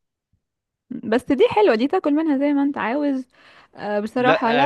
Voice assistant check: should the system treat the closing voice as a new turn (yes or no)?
yes